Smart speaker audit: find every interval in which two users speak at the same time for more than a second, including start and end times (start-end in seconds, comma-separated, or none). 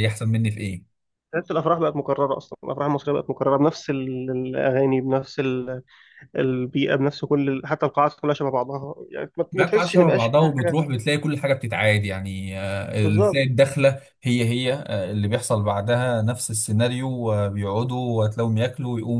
9.5-10.8